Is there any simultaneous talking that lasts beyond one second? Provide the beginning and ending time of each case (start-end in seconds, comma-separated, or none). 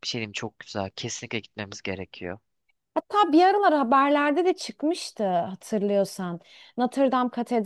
none